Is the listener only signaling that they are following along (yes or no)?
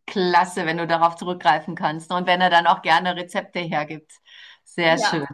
no